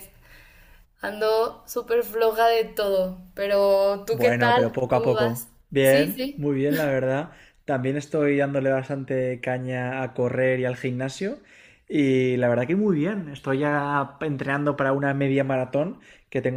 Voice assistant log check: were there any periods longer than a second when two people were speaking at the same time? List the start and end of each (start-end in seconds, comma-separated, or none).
4.1-6.5